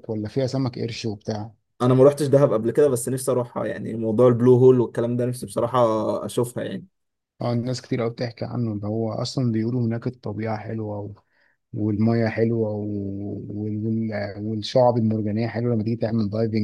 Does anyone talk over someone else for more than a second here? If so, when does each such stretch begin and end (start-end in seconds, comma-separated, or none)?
none